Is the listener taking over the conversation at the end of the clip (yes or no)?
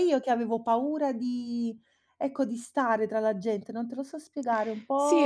yes